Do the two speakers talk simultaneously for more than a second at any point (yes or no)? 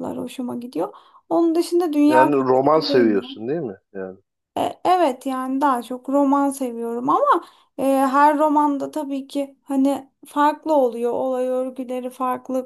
yes